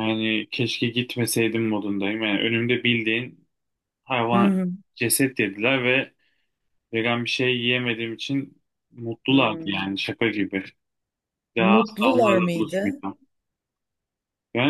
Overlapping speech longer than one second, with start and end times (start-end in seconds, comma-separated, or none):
11.6-13.0